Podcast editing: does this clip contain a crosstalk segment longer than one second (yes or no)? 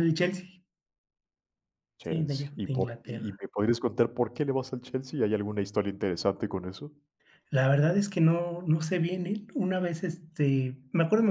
yes